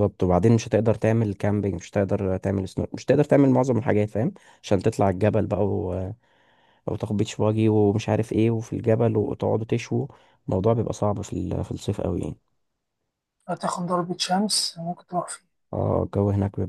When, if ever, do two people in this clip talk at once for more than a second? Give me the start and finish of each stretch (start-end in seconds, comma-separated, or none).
none